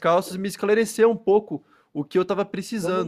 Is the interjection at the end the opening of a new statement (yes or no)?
yes